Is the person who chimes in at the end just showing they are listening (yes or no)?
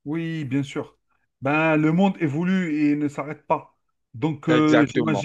yes